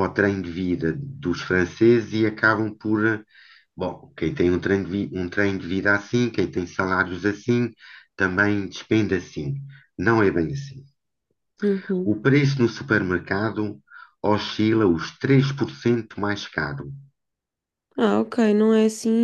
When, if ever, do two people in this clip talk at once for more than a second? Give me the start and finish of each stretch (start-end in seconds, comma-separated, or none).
none